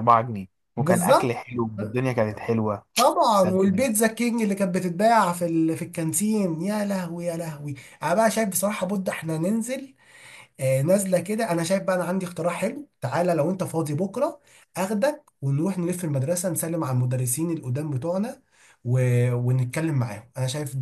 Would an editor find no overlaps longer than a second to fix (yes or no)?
no